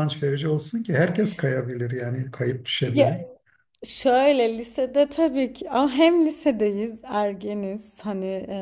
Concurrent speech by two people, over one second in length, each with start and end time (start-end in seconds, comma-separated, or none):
none